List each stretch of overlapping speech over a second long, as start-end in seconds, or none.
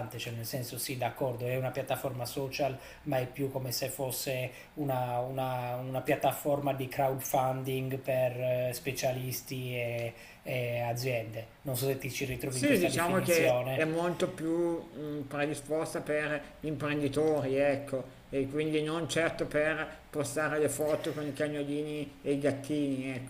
12.5-14.0